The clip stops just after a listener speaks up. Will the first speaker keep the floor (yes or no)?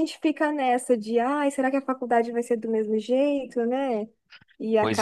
yes